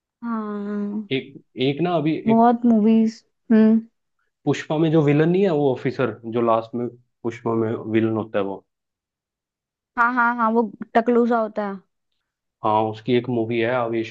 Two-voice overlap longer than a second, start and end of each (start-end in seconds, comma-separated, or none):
none